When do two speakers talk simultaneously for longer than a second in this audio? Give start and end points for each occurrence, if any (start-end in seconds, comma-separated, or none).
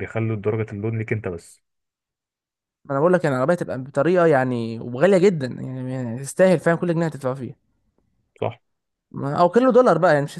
none